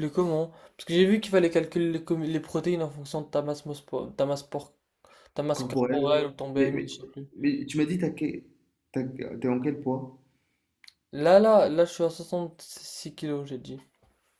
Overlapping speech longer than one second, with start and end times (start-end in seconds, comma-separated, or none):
5.5-6.9